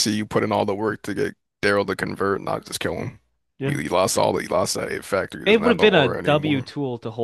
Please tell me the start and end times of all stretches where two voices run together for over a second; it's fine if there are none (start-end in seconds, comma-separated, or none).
5.4-6.7